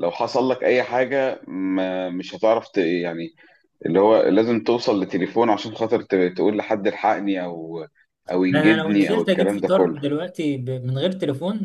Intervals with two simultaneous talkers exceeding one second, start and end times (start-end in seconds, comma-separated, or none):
8.5-10.0